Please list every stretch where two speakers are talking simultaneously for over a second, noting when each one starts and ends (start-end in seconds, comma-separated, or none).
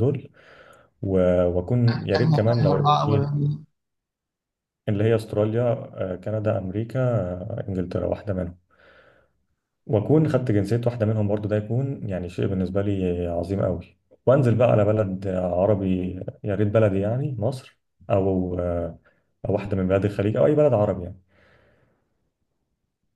2.2-3.4